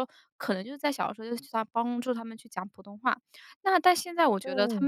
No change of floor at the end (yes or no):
yes